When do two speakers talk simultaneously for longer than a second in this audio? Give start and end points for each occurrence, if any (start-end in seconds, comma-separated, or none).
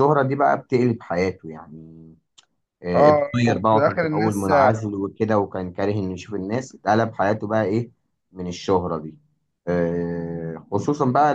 2.9-4.8